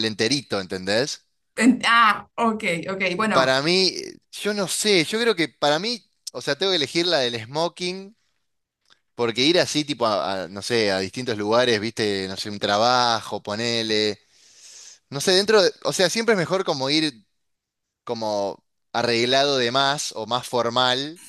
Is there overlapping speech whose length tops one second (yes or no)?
no